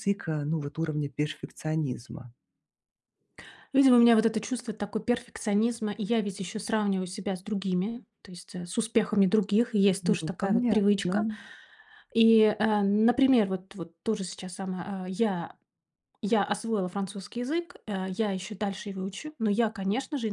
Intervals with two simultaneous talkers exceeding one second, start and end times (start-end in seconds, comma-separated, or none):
10.0-11.3